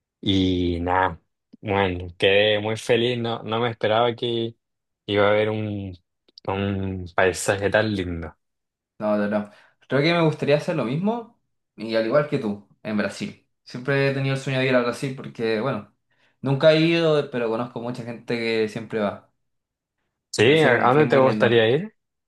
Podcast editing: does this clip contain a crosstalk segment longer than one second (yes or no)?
yes